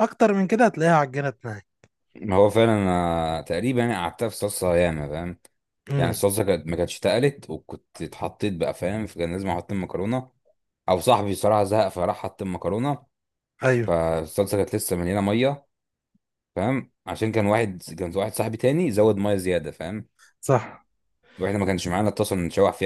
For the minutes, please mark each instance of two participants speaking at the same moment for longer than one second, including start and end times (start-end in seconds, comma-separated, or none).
none